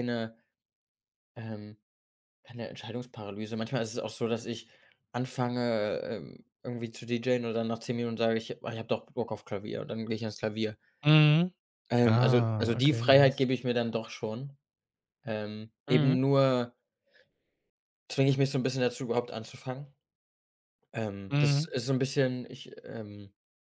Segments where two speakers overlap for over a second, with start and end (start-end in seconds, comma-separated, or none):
12.0-13.5